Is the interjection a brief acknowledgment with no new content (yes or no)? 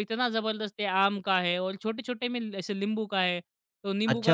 no